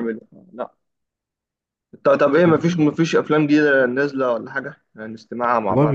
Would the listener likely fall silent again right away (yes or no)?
no